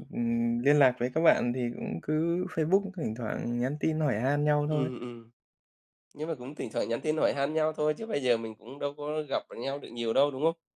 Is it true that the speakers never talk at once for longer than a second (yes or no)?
yes